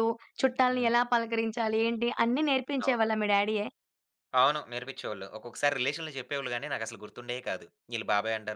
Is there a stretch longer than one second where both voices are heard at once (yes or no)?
no